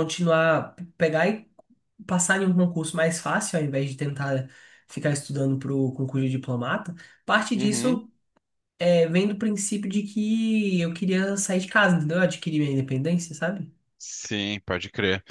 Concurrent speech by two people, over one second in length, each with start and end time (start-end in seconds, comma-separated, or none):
none